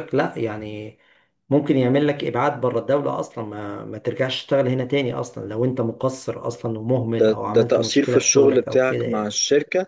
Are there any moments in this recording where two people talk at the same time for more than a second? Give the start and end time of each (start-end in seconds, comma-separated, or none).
7.2-9.3